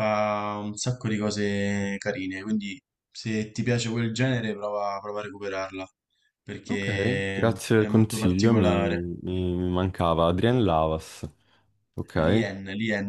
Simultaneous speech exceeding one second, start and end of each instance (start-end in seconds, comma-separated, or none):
6.7-9.1